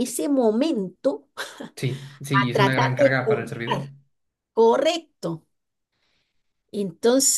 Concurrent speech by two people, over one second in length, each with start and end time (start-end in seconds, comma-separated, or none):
2.3-3.9